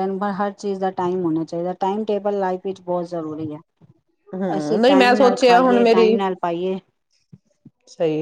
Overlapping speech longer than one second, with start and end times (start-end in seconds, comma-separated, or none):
4.6-6.2